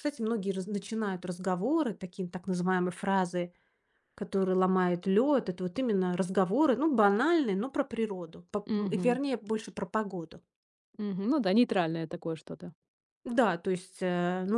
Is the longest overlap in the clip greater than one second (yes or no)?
no